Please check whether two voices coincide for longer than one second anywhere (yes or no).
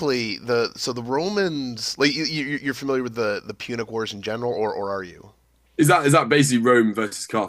no